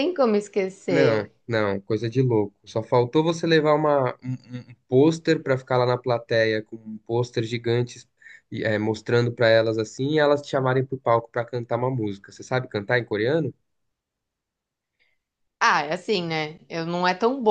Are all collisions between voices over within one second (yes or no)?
yes